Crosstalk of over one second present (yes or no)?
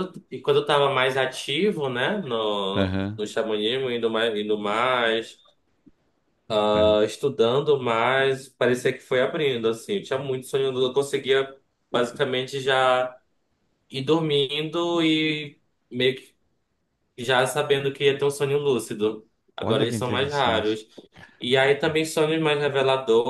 yes